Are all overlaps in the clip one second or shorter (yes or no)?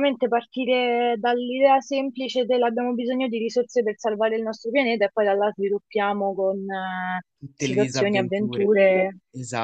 no